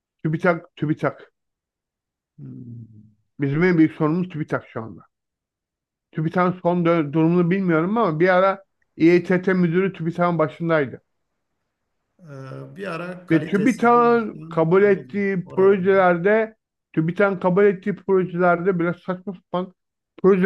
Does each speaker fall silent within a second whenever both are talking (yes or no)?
no